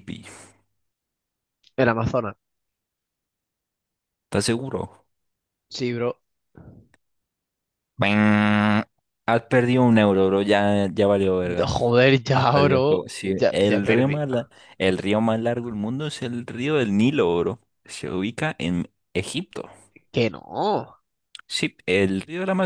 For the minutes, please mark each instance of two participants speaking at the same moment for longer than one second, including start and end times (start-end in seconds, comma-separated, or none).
12.3-14.2